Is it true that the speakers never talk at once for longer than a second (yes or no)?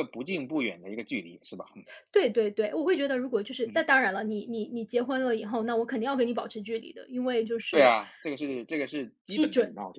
yes